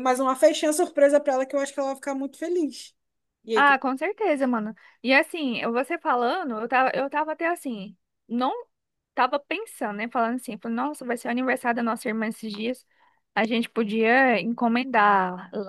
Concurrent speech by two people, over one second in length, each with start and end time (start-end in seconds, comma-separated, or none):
none